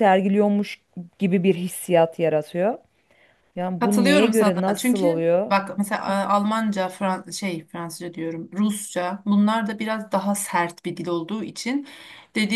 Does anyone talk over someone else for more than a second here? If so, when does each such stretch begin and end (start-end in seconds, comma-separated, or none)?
3.8-5.5